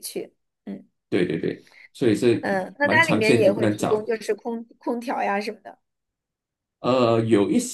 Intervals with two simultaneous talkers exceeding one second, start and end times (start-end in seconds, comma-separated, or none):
2.4-4.1